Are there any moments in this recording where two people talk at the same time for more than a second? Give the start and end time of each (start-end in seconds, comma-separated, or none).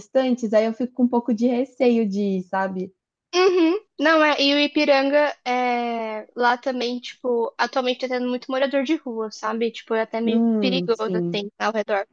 10.2-11.4